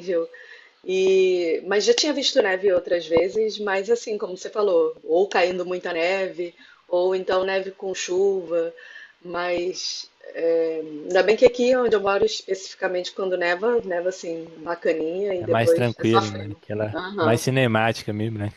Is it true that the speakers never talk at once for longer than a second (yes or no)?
no